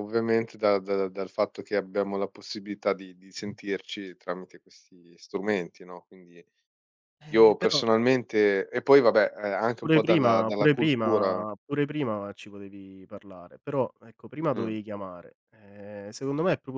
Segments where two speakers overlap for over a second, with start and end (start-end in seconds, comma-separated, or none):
9.8-11.4